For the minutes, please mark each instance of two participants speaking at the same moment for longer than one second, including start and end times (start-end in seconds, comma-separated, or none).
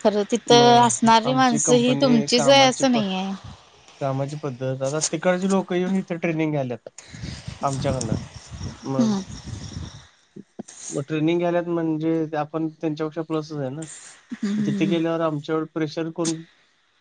1.3-3.0